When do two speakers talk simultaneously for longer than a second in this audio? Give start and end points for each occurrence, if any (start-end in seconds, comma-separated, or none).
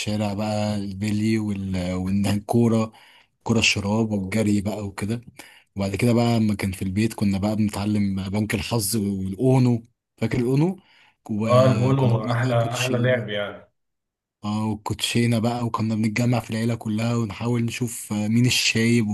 11.4-13.3